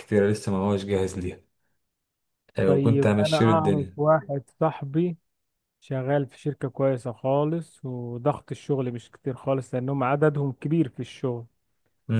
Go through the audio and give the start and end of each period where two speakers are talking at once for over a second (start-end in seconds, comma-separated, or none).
2.7-4.0